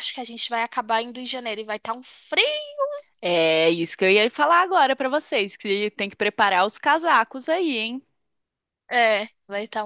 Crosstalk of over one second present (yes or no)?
no